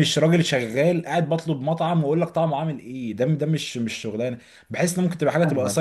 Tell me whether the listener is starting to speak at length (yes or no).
yes